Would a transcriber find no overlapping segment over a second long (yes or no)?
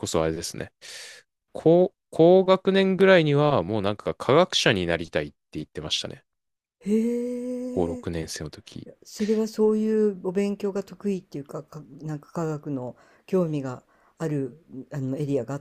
yes